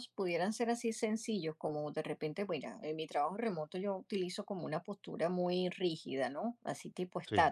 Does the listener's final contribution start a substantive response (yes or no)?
no